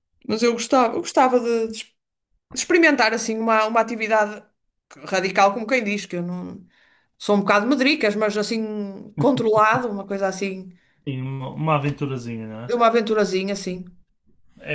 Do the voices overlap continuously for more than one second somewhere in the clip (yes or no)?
no